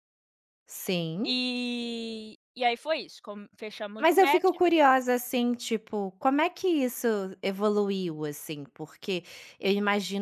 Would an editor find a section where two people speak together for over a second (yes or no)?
no